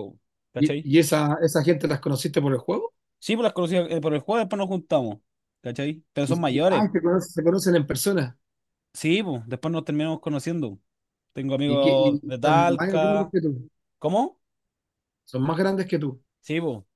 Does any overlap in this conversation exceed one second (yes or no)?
yes